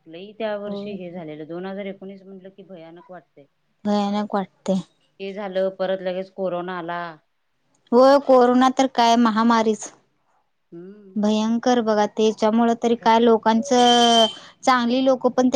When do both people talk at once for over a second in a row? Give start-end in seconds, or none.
none